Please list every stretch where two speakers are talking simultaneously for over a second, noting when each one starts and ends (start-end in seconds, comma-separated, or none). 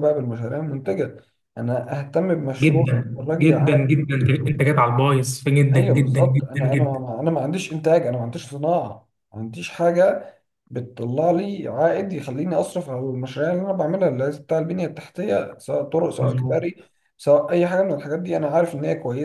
2.6-4.1, 5.7-7.0